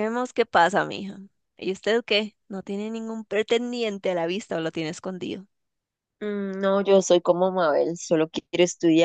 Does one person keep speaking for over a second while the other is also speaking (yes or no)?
no